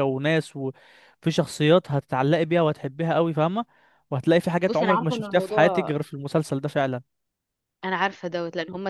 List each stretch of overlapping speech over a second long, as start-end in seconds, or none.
4.7-5.9